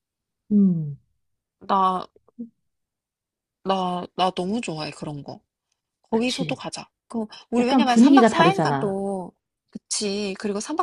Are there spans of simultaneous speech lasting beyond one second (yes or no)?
yes